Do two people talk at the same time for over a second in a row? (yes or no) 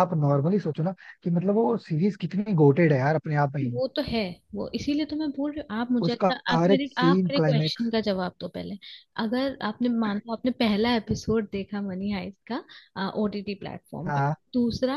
yes